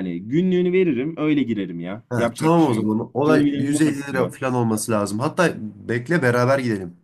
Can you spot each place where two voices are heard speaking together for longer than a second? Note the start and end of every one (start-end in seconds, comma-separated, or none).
2.1-4.3